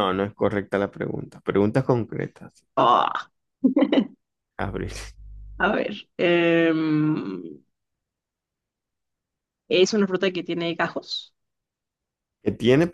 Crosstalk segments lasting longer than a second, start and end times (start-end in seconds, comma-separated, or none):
none